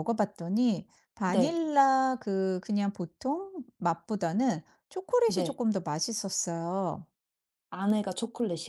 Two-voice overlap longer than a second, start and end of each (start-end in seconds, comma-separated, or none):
none